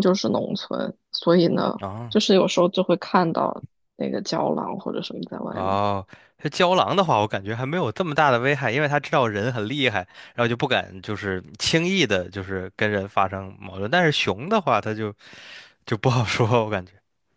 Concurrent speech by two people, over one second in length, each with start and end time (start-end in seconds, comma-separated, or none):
none